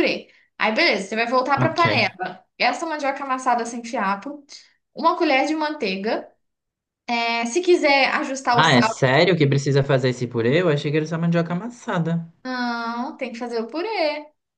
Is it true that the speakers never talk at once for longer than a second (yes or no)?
yes